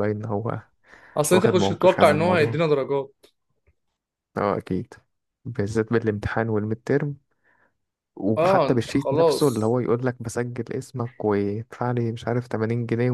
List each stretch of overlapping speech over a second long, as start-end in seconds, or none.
1.3-2.6, 8.4-9.8